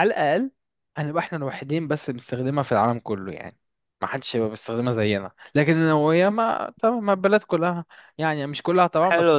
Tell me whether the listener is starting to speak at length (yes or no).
yes